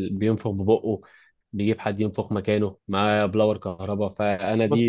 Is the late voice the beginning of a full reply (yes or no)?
no